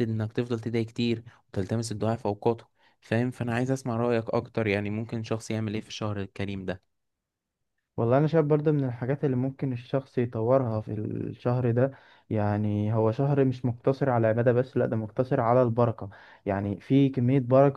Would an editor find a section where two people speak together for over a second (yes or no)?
no